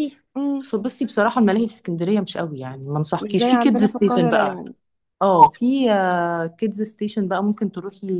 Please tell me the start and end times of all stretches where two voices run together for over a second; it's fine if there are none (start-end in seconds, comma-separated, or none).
3.2-4.6